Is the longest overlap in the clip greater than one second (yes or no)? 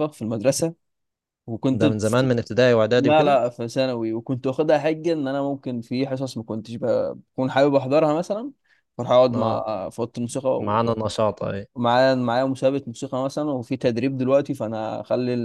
no